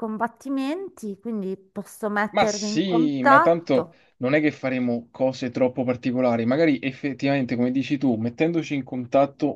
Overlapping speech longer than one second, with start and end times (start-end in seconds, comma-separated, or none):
2.3-4.0